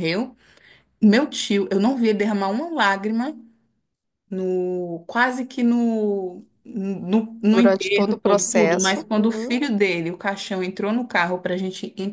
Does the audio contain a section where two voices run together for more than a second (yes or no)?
yes